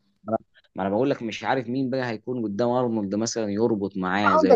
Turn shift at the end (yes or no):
yes